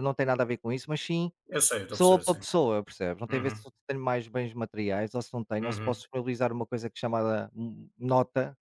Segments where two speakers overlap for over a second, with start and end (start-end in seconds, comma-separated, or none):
none